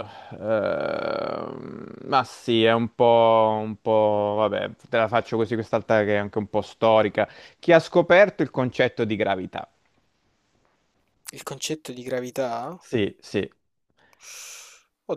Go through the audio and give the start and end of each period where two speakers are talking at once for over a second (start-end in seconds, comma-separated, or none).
none